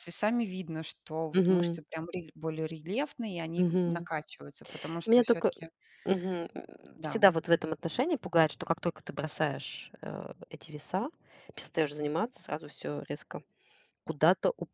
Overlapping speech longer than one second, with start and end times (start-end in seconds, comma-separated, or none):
none